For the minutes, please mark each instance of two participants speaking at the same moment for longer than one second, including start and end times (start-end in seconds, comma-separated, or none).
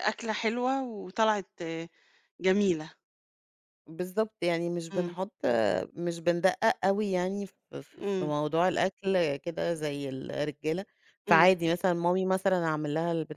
none